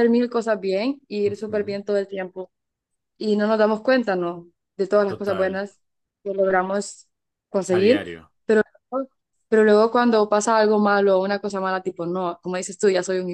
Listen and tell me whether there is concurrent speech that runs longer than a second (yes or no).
no